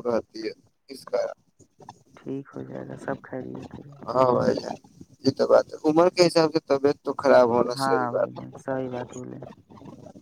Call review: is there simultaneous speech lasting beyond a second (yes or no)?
yes